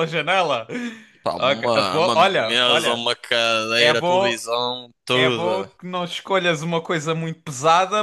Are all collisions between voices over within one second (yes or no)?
no